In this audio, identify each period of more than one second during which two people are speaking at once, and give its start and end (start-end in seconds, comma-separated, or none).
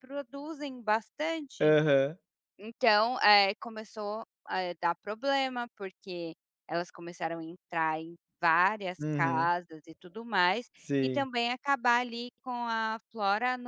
none